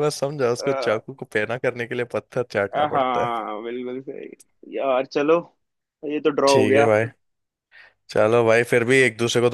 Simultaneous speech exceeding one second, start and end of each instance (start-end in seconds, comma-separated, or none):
none